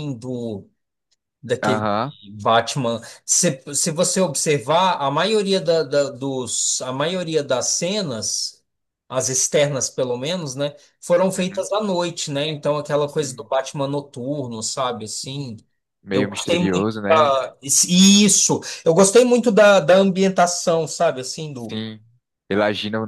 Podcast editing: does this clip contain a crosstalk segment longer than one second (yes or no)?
yes